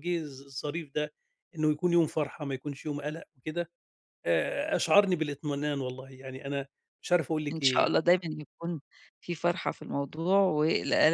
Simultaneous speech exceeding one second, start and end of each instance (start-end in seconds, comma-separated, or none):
none